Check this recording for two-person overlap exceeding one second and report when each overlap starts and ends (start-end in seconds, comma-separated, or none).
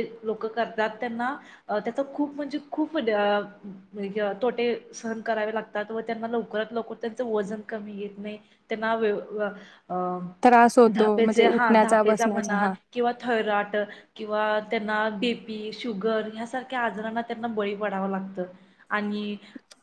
10.9-12.7